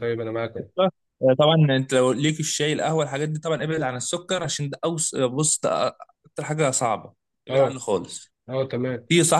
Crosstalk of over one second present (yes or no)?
no